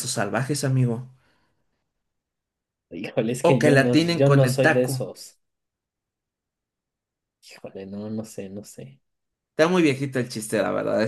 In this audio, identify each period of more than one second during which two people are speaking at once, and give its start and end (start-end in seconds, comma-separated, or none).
3.4-5.1